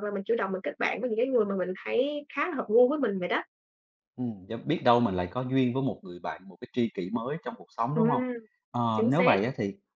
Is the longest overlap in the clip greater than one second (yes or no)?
no